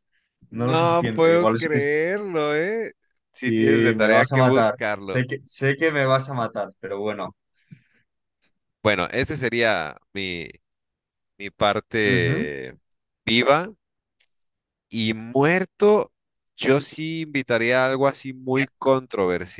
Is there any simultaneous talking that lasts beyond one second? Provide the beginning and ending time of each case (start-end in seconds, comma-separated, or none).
0.5-1.8, 3.4-5.2